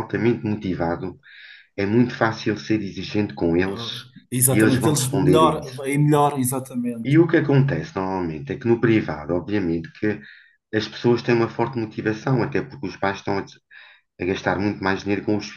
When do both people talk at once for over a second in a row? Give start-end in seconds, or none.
4.5-5.8